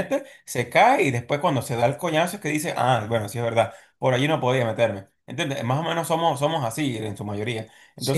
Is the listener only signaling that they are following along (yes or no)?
no